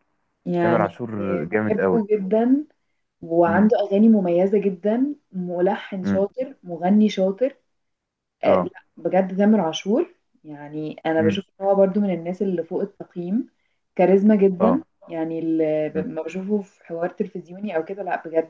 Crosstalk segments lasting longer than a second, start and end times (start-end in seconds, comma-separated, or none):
none